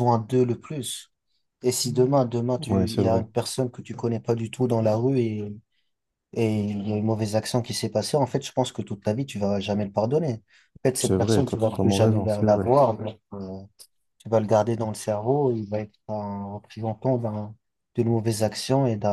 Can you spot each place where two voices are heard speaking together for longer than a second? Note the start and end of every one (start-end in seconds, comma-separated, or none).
11.0-12.7